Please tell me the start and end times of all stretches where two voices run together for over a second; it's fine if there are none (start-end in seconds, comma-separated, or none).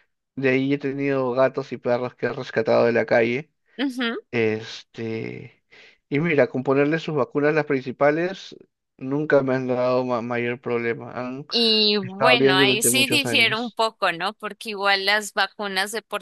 12.0-13.8